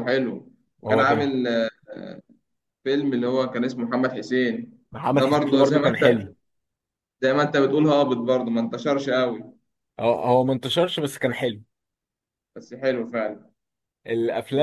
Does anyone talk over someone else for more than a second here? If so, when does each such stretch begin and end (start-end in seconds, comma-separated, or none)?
4.9-6.3